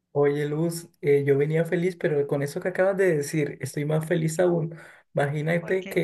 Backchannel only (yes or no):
yes